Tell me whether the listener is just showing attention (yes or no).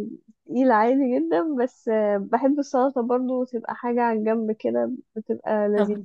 no